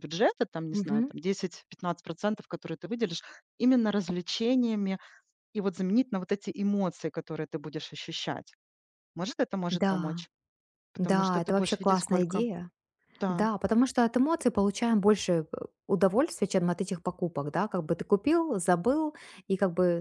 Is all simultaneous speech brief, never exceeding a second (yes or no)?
no